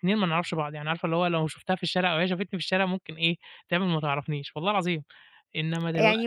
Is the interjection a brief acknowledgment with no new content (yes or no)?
no